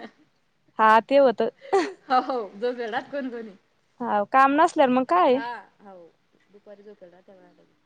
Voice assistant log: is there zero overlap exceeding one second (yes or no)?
yes